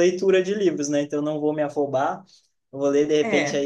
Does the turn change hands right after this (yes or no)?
no